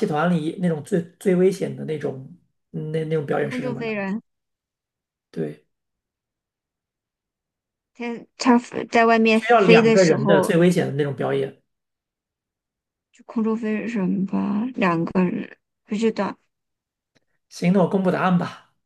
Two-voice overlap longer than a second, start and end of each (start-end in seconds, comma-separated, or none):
9.3-10.5